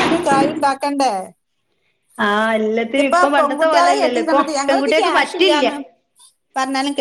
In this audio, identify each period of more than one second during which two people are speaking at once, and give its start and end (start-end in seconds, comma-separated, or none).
2.9-5.7